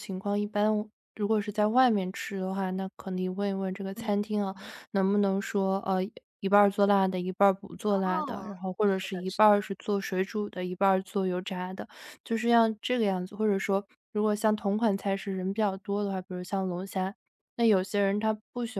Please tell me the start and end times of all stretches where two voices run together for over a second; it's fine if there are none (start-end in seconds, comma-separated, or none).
7.9-9.6